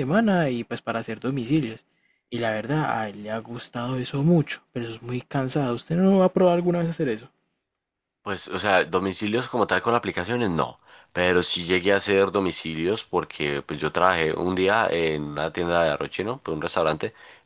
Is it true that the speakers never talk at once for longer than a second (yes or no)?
yes